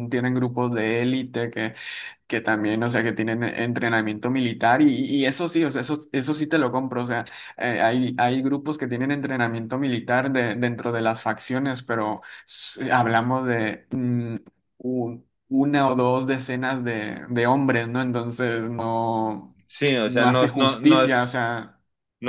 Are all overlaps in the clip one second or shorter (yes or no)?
no